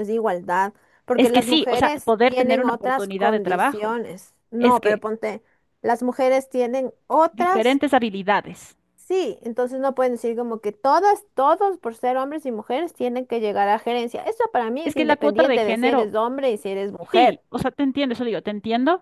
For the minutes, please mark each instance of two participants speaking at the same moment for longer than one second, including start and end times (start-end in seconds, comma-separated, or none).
1.1-4.0, 14.8-16.1